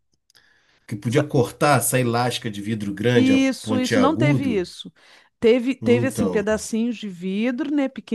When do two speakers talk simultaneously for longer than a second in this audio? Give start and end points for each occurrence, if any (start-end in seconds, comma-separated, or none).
3.1-4.7